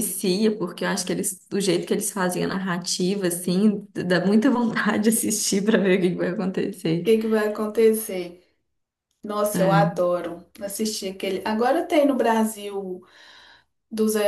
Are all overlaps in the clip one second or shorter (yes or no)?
yes